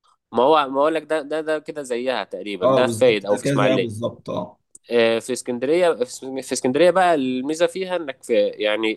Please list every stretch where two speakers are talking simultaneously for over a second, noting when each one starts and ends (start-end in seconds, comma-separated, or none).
2.6-3.9